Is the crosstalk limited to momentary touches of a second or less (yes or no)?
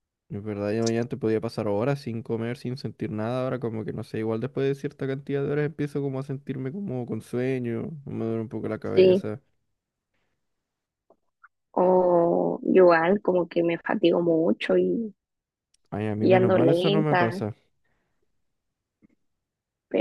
no